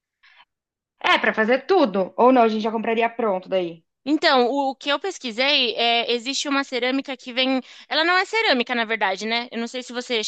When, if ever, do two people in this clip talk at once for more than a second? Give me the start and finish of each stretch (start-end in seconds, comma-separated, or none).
none